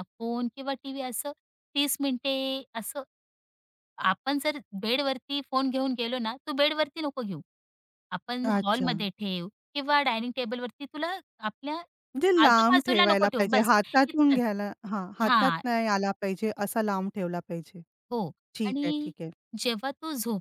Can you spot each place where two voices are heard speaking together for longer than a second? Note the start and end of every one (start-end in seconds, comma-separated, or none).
12.4-14.4